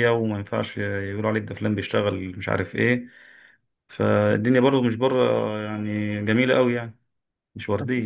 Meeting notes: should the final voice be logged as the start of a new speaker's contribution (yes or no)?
yes